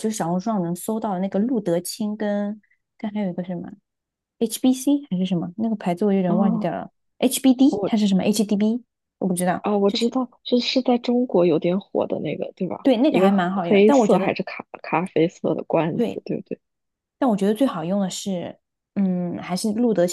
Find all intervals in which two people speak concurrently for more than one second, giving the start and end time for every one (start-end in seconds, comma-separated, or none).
12.8-14.3